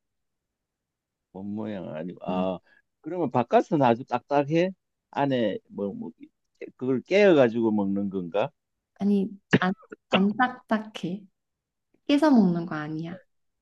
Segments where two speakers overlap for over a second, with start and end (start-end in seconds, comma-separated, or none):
none